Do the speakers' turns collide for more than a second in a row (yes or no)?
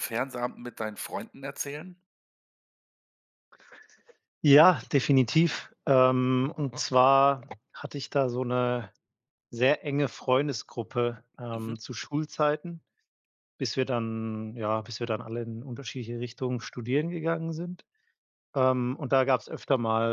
no